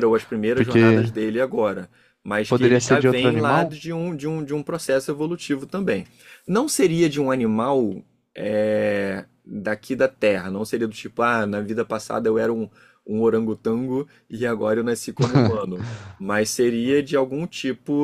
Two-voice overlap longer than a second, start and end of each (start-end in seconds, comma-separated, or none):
2.5-3.9